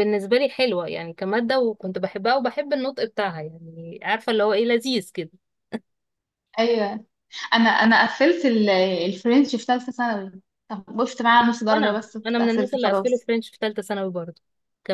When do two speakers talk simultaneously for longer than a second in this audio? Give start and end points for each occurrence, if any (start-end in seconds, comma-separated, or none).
11.7-13.3